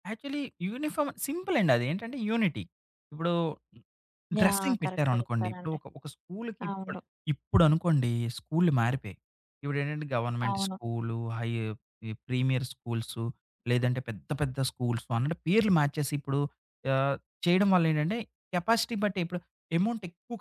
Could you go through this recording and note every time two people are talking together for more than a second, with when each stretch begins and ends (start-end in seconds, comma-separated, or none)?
4.4-5.8